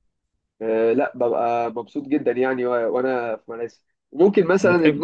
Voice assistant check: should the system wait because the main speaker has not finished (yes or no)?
yes